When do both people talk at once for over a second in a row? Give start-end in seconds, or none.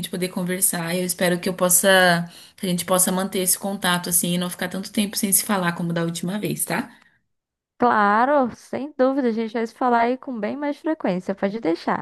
none